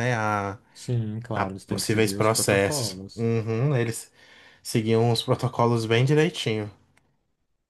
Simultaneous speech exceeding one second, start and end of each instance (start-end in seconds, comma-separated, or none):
1.3-3.3